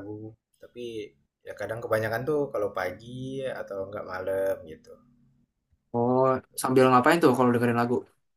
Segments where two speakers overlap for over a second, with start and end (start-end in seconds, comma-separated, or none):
none